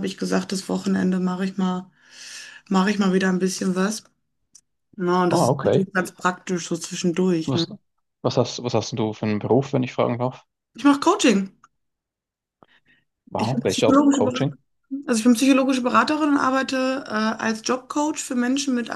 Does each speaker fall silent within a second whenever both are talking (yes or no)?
no